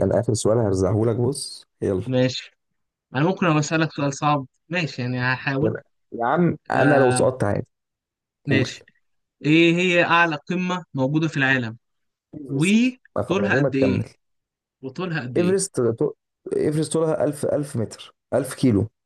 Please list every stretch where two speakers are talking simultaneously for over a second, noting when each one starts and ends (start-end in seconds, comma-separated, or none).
12.5-14.0